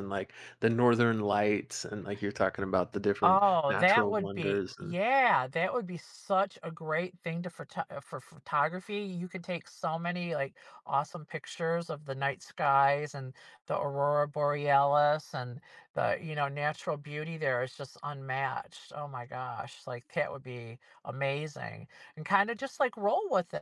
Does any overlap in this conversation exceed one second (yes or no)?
yes